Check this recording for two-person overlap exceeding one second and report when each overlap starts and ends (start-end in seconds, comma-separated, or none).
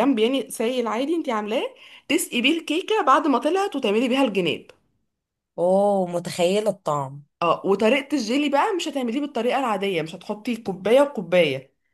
none